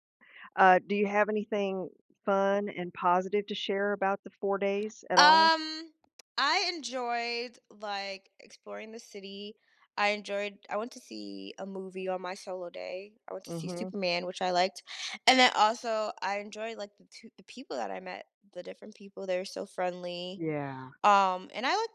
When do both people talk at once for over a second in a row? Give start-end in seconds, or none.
none